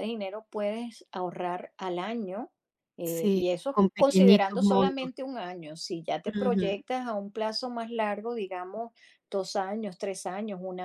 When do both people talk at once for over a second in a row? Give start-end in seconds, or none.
3.0-5.1